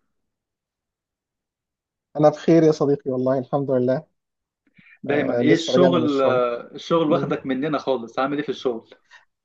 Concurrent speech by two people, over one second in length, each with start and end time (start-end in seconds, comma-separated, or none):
5.1-6.4